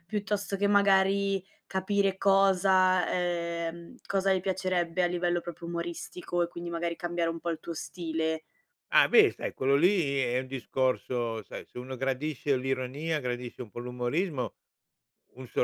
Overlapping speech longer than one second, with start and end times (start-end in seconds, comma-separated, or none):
none